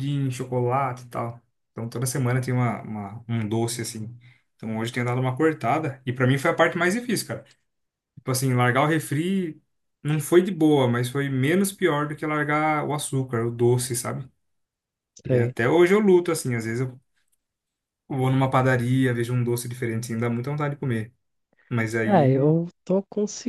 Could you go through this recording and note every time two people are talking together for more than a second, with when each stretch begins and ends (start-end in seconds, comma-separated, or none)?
none